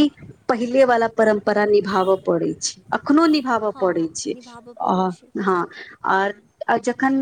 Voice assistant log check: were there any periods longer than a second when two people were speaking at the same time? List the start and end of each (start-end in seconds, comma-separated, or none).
3.5-5.0